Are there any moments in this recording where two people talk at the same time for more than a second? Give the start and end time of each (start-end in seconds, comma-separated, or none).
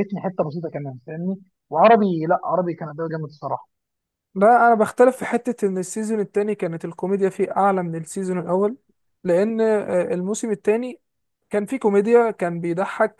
none